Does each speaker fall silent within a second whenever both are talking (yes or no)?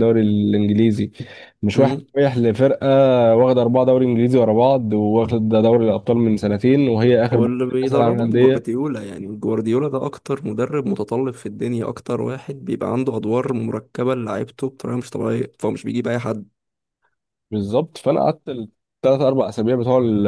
no